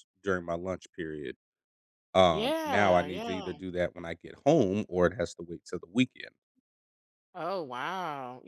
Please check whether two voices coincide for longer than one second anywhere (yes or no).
yes